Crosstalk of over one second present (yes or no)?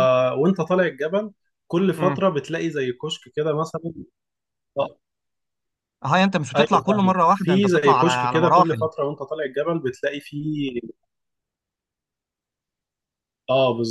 yes